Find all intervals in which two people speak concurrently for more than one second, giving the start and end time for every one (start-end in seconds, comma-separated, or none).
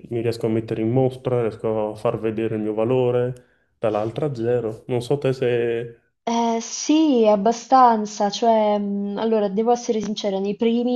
none